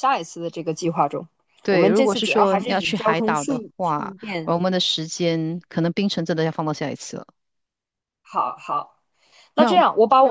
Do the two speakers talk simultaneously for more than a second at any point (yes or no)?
yes